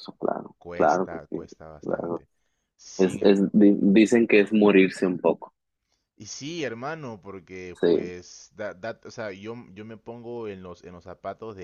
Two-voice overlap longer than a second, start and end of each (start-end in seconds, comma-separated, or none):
0.6-2.2